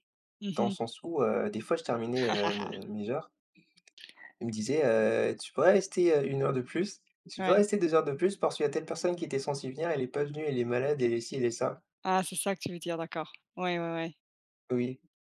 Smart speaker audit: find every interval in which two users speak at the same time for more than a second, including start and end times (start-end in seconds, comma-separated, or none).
none